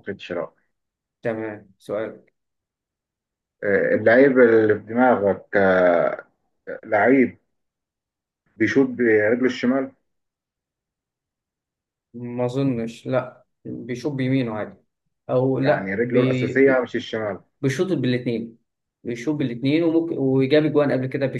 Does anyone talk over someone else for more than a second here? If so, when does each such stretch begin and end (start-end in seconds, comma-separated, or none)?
15.6-16.9